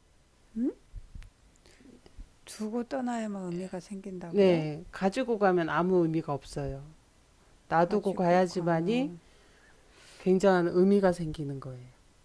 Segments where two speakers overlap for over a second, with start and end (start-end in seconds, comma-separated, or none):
7.8-9.1